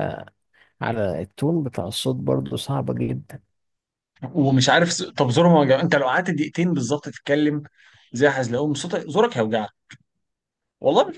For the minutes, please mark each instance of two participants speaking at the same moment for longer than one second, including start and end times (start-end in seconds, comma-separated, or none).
none